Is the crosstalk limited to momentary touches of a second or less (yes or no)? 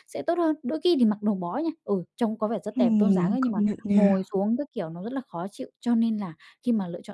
no